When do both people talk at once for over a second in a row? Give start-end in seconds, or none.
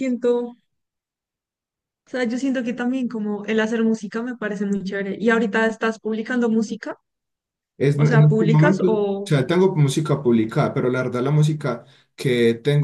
8.0-9.3